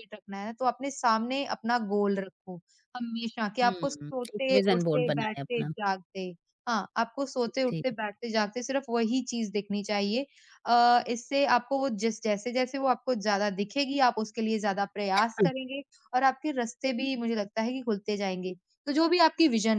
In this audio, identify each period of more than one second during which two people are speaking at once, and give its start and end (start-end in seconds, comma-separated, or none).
3.6-5.7